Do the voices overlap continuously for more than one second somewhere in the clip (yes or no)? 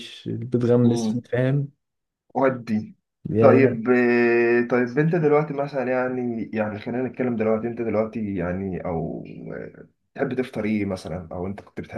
no